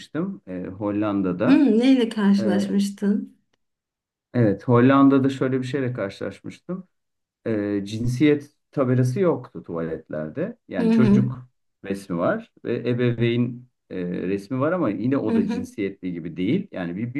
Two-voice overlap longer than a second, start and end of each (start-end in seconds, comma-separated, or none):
none